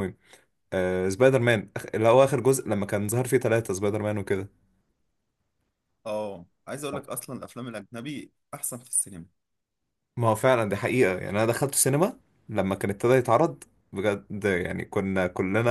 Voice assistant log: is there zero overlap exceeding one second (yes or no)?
yes